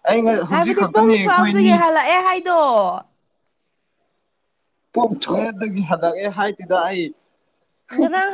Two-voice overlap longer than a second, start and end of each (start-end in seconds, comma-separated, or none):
0.5-1.7